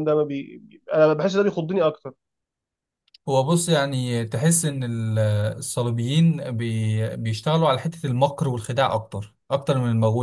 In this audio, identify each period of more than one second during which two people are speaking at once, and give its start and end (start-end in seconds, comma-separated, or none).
none